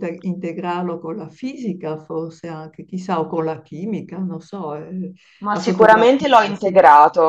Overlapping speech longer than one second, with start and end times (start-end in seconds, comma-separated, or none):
5.5-6.8